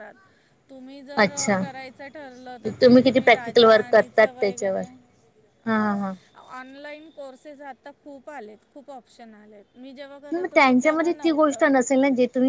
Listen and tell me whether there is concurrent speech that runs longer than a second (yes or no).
yes